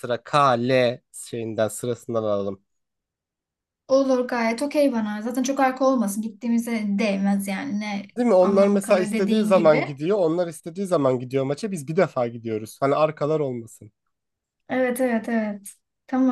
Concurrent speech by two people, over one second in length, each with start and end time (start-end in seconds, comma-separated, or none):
8.2-9.9